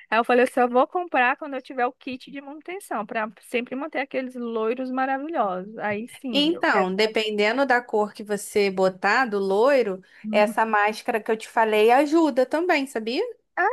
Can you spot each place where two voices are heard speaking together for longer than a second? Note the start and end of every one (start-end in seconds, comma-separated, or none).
none